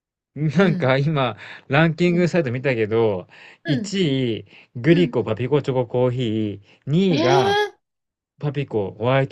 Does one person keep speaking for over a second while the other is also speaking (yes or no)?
no